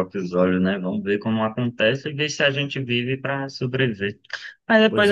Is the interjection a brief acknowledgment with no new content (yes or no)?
yes